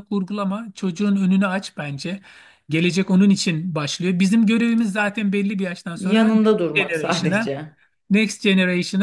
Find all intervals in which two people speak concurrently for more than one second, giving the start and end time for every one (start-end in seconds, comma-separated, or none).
6.0-7.5